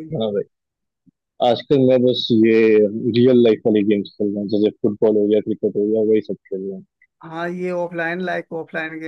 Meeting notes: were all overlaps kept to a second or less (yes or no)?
yes